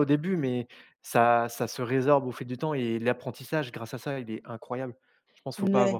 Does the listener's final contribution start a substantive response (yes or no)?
yes